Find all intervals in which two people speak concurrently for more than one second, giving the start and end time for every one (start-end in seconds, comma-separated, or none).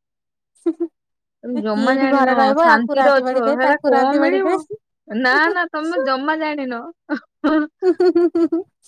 1.6-4.5